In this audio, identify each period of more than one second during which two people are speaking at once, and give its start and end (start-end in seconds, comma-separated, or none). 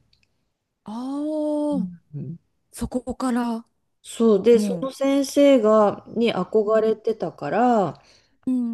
none